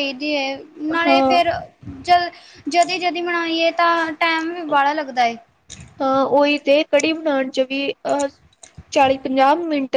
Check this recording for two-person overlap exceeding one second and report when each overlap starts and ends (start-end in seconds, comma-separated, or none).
none